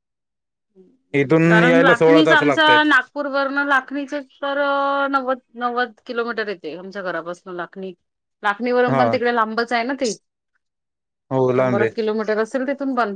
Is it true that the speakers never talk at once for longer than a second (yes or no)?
no